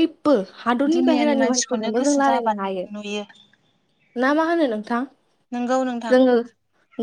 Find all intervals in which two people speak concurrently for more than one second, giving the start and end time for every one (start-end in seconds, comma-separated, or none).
0.9-2.9